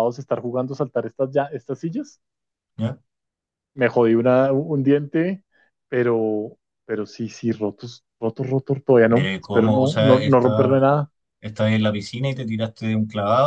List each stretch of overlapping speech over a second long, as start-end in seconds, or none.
9.1-10.8